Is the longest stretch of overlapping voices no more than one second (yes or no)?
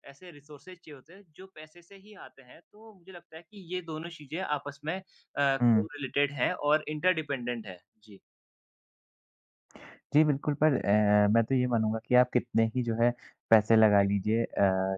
yes